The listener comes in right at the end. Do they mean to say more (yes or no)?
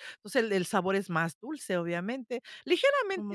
no